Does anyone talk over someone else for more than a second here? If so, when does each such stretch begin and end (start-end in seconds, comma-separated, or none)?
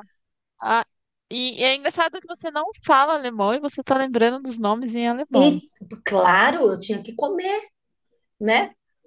none